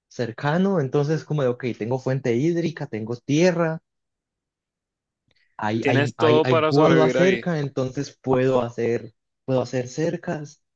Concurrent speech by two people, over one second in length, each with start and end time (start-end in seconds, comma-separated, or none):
5.8-7.4